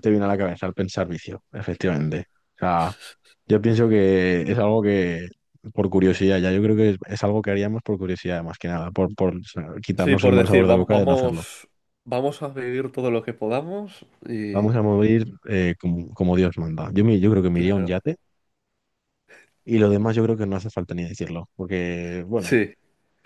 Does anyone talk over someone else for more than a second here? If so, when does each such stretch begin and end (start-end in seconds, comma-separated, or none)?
9.9-11.4